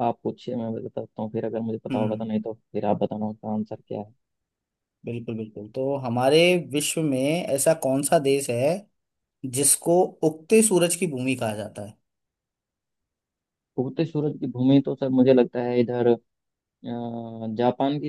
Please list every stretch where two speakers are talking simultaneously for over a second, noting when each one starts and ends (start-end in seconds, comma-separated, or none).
none